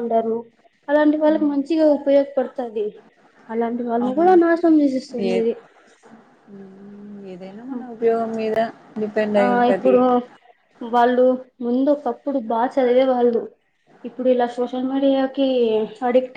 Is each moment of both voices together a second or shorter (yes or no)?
yes